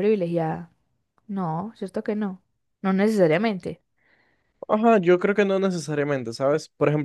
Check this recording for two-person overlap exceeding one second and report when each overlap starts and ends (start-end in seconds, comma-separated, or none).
none